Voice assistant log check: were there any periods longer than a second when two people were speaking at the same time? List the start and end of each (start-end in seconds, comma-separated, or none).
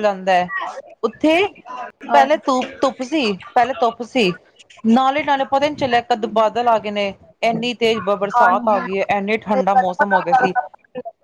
8.4-10.5